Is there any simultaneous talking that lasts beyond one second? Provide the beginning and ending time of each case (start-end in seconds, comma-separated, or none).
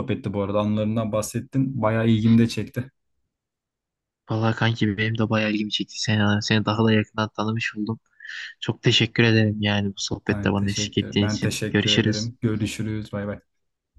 10.3-12.3